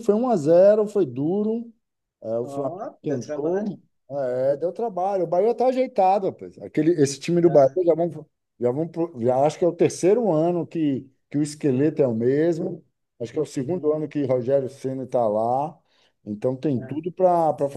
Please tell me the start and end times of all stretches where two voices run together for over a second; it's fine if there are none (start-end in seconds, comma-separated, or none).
2.4-3.7